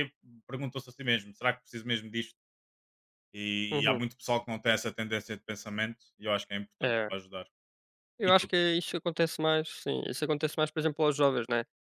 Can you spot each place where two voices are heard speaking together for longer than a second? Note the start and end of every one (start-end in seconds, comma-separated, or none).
none